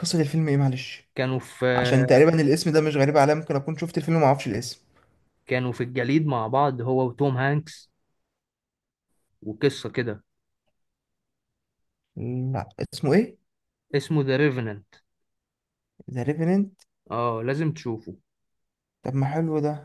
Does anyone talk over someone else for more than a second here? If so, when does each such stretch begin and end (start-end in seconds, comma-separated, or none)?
none